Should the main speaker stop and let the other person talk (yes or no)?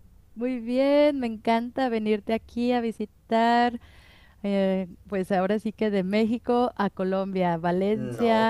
no